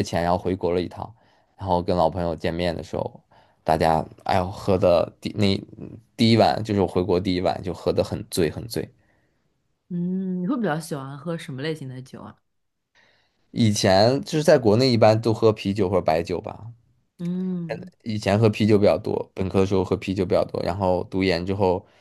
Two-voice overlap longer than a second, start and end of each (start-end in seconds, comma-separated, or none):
none